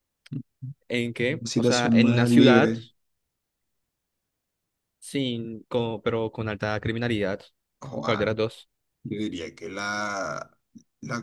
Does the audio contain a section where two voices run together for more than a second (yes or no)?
yes